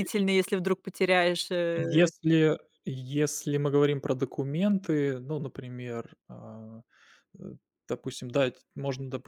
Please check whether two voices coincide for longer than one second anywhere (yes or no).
no